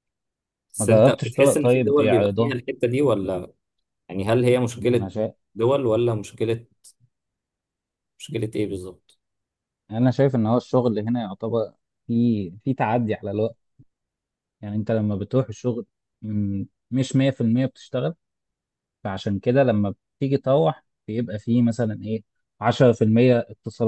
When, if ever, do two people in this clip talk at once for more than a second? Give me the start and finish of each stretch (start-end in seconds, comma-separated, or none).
0.8-2.5